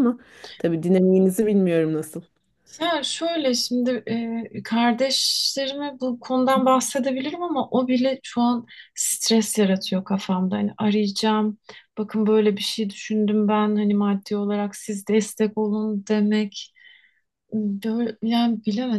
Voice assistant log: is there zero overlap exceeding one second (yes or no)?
yes